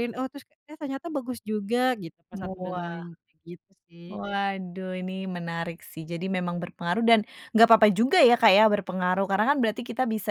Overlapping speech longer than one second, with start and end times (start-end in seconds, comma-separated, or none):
none